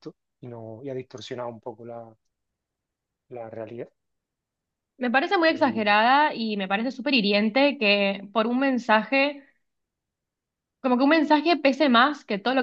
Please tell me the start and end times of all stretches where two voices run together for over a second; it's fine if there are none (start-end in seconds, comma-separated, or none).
none